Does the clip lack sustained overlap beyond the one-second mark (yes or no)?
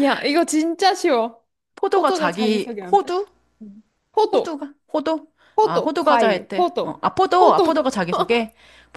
no